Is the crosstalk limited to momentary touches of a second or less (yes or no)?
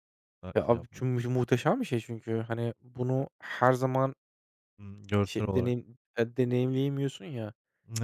yes